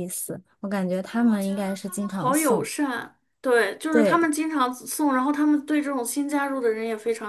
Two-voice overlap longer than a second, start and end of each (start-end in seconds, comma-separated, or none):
1.1-2.7